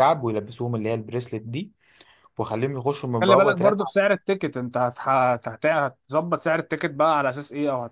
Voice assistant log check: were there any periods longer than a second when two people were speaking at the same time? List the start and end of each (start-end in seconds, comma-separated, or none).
none